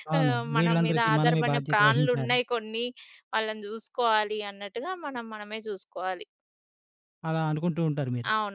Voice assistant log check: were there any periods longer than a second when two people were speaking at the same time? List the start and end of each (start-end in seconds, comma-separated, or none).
0.6-2.4